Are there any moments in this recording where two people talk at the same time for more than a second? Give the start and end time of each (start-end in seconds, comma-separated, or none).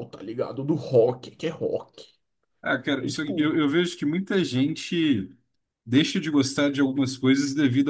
none